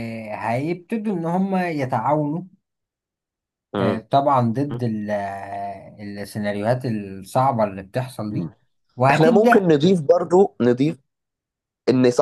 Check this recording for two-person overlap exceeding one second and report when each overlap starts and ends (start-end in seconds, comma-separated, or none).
none